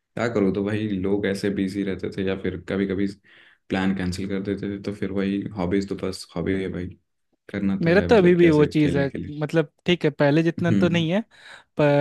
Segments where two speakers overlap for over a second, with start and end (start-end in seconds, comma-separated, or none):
7.8-9.3